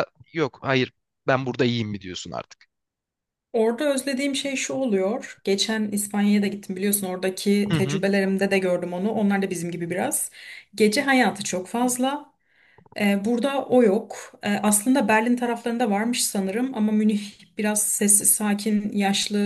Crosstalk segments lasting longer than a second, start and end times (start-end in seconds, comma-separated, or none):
none